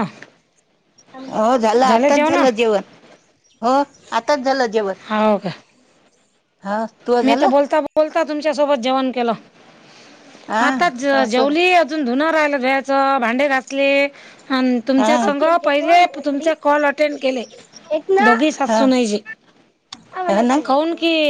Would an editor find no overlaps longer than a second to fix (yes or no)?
yes